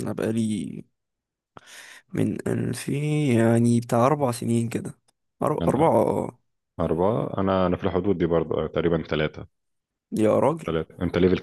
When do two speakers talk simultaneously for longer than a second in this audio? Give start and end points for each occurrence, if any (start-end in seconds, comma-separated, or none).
none